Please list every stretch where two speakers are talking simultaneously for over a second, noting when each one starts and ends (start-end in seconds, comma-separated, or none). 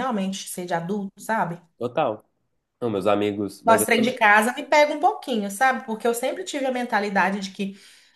none